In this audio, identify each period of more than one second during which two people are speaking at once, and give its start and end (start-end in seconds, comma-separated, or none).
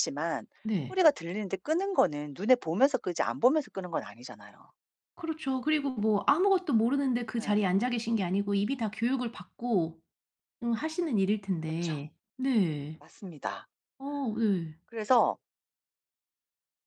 none